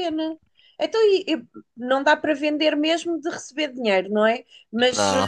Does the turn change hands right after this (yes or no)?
no